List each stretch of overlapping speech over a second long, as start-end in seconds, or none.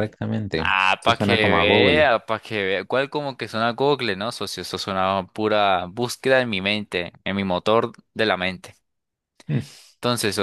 0.6-2.1